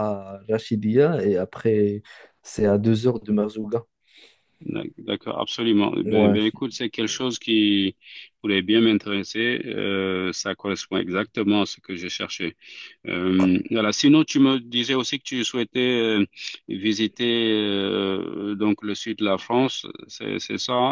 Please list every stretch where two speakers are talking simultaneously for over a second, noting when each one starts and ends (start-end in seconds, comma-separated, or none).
none